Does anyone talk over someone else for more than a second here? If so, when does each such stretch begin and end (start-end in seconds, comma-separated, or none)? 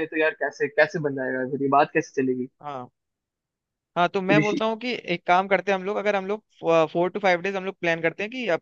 none